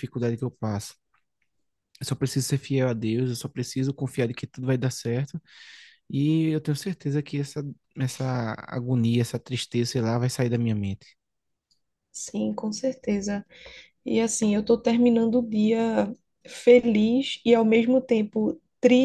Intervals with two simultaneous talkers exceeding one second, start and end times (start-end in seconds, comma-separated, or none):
none